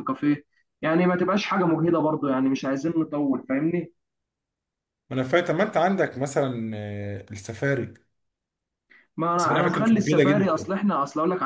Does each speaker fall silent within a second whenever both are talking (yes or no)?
no